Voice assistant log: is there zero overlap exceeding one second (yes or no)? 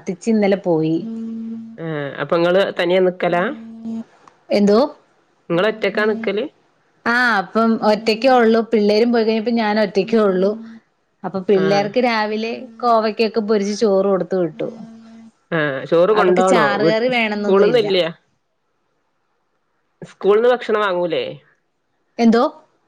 no